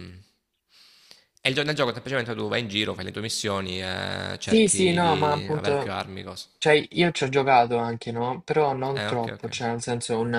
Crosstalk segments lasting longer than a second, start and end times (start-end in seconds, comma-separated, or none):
4.4-6.0